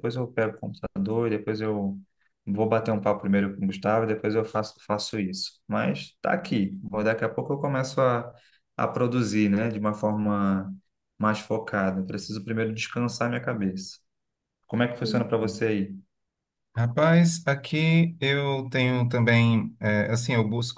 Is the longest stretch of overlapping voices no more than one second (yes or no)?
yes